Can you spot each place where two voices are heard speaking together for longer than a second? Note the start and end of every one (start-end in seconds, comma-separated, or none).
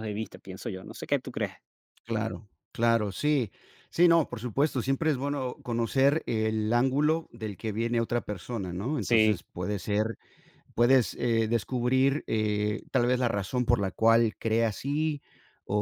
none